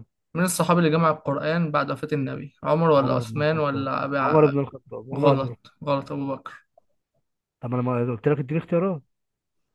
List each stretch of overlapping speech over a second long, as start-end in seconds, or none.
3.0-4.5